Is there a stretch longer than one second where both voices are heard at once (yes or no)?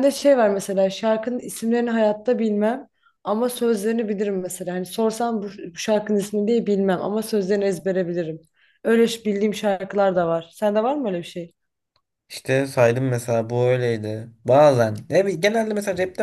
no